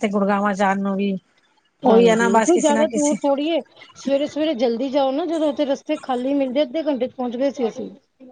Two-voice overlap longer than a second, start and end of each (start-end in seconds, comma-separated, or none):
1.9-3.2